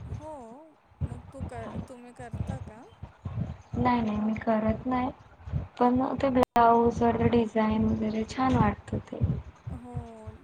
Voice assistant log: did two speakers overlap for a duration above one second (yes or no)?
no